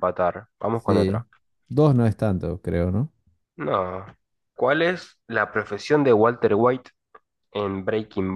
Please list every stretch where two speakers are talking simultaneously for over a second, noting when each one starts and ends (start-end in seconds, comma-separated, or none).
none